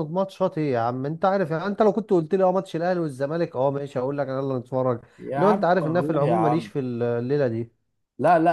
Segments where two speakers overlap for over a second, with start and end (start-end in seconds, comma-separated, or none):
5.4-6.7